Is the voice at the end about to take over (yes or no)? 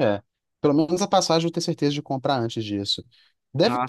no